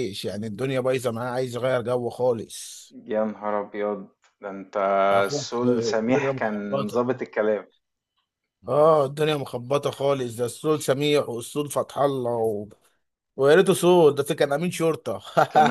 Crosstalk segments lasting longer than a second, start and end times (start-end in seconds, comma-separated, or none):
5.3-7.0